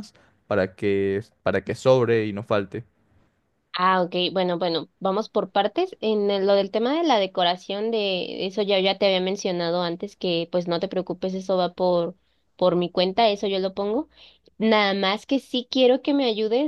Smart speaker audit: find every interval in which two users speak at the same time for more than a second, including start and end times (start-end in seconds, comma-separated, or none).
none